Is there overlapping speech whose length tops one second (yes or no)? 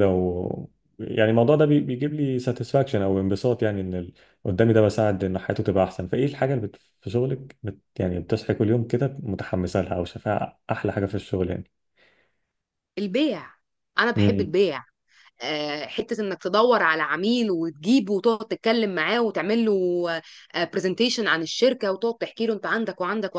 no